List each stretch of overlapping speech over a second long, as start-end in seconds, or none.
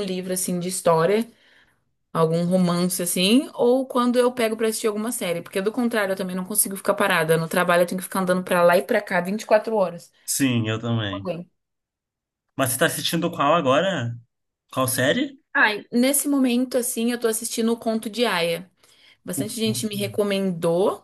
none